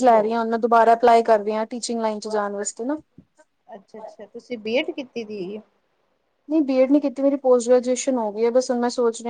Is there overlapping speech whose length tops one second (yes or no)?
no